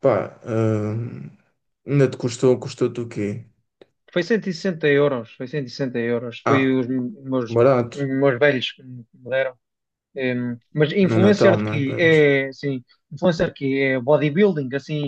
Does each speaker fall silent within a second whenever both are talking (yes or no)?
no